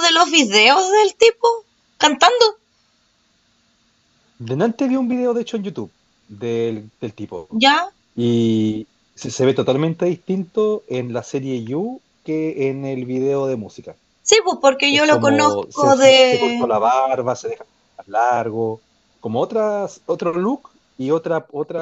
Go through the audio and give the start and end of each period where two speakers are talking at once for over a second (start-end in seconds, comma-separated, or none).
14.9-16.7